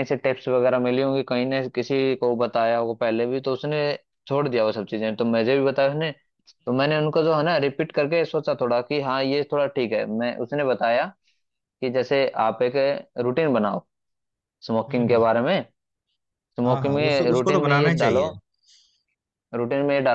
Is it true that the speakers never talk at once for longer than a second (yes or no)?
no